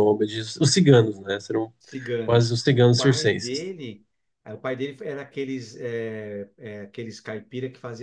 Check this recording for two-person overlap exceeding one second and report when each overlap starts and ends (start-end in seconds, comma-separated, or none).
2.2-3.7